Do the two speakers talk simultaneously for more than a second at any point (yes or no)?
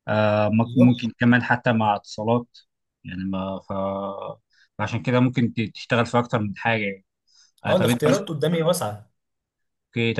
no